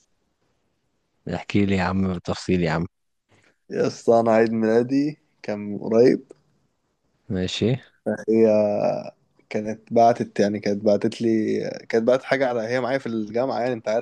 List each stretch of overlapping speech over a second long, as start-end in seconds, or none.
none